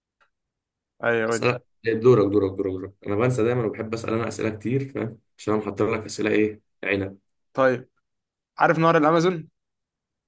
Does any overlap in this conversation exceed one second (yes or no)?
no